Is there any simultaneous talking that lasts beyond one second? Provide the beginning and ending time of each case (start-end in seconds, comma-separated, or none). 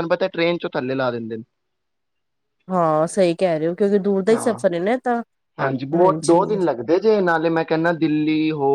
none